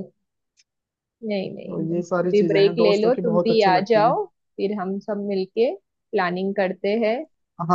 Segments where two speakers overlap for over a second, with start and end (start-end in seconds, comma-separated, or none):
1.7-4.2